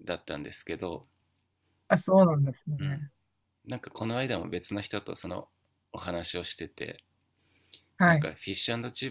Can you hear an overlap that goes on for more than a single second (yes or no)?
no